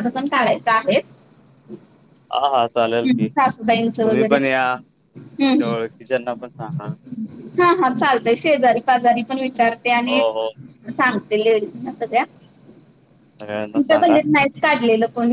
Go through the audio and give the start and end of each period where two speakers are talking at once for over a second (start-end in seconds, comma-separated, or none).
3.2-4.6